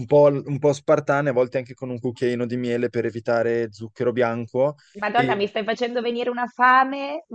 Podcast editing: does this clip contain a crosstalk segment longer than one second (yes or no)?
no